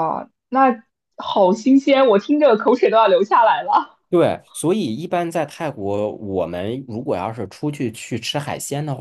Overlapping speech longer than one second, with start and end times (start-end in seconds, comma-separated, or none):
none